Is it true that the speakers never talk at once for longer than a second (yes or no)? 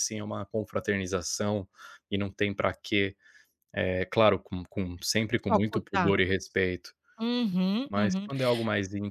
yes